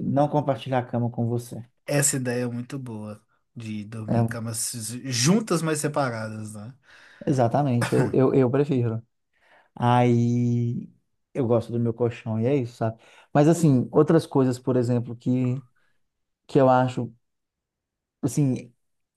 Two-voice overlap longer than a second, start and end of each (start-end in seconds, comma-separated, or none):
none